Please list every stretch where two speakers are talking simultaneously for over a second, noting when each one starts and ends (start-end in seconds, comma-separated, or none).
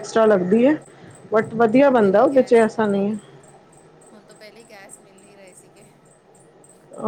1.7-3.1